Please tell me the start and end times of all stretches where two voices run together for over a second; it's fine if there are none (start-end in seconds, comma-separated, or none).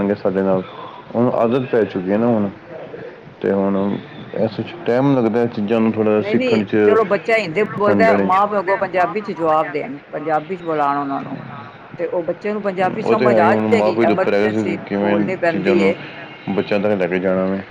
13.1-15.8